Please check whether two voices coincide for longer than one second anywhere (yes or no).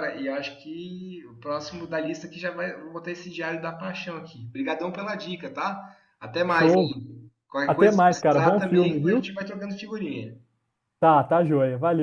yes